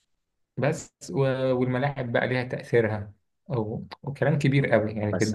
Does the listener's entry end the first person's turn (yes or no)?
no